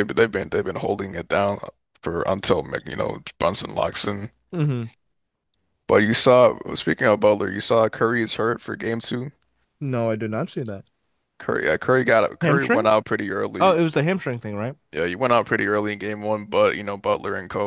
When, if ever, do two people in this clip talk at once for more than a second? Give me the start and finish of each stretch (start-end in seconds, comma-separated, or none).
none